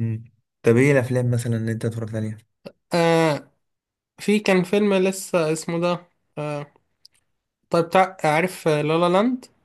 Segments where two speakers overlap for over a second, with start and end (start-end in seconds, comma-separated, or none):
none